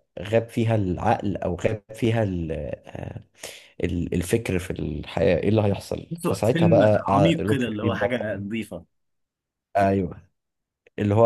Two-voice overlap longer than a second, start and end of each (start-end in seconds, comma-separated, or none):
6.1-8.2